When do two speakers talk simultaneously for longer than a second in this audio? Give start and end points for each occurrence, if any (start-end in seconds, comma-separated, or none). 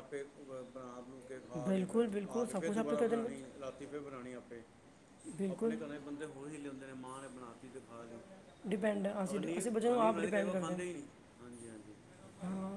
1.6-3.6, 9.3-10.8